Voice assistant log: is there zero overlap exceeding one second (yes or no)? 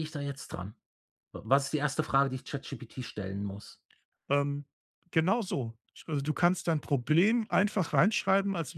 yes